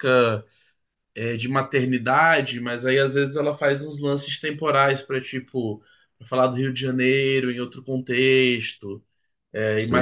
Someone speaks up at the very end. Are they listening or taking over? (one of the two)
taking over